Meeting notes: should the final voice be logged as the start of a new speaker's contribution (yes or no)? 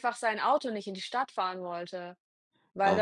yes